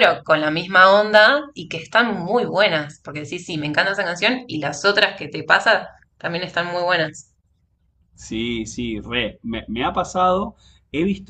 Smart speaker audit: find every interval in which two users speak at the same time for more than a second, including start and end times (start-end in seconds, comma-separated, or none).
none